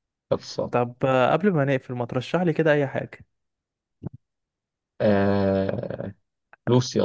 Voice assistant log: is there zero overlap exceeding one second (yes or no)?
yes